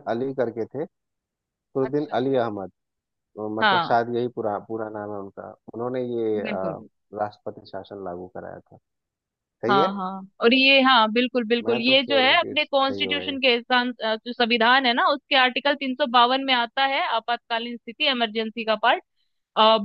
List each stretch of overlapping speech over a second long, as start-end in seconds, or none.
11.6-13.4